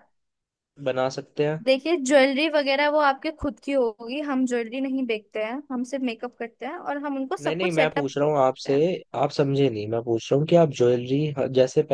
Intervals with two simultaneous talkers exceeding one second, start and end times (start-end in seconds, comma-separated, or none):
7.4-8.7